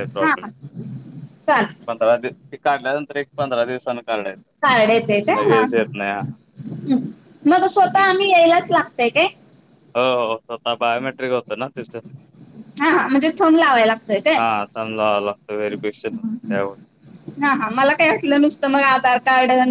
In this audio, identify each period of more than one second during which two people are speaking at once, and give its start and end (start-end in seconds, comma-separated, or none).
none